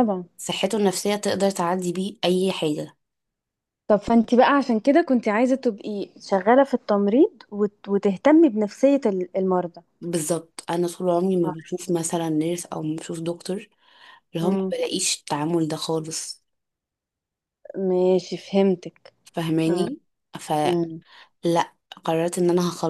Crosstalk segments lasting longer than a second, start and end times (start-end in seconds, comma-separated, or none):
none